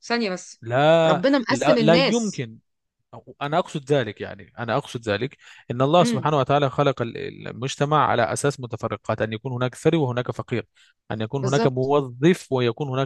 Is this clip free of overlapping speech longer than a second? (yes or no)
no